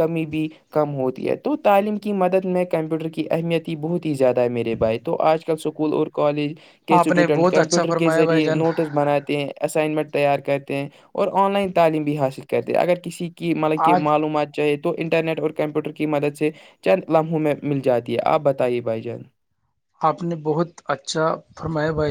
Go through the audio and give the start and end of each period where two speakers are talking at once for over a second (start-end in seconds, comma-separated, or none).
7.0-8.6